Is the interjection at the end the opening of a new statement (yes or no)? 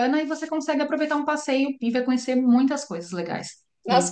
yes